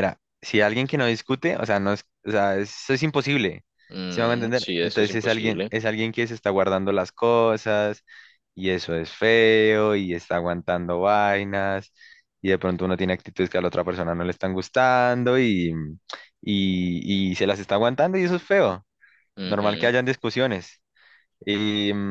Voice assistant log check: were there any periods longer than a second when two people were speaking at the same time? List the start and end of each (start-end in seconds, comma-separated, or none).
4.1-5.8